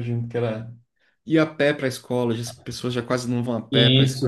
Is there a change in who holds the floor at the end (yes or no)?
yes